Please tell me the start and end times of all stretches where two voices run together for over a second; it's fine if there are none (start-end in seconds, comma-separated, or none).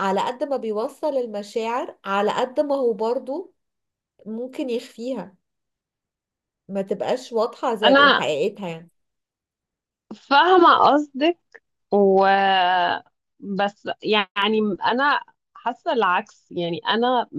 none